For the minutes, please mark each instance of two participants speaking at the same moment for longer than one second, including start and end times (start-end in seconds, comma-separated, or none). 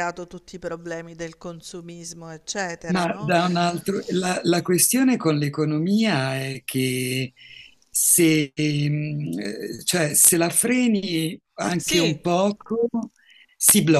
none